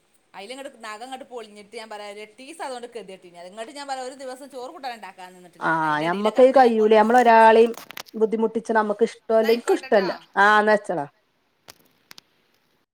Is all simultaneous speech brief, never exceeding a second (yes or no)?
no